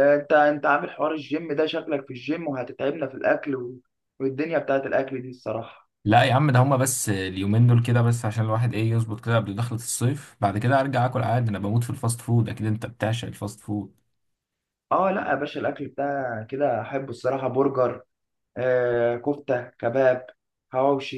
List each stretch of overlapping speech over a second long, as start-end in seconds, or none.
none